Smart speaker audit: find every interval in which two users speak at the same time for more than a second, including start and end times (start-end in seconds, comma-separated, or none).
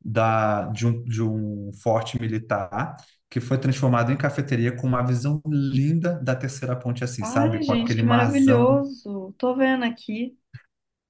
7.2-8.8